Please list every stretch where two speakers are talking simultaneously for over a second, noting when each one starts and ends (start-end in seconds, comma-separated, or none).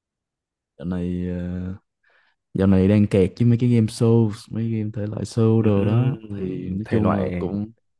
5.6-7.5